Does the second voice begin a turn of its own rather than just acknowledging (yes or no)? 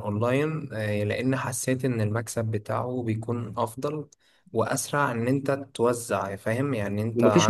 yes